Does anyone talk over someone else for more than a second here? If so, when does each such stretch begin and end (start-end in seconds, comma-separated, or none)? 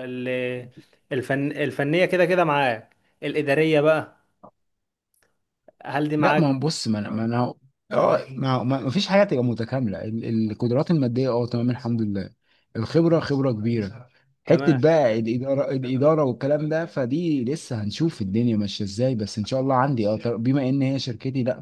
none